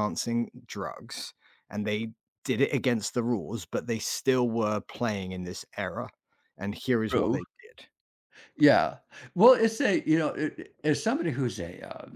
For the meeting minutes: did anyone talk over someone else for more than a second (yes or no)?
no